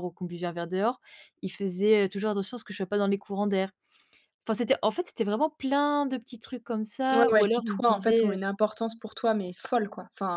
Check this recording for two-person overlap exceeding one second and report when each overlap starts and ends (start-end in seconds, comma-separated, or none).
7.1-8.4